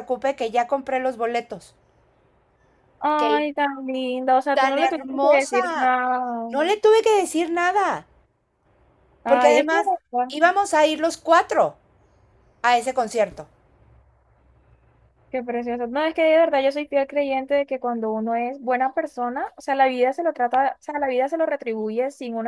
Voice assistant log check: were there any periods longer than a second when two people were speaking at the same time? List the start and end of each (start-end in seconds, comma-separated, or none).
4.5-5.9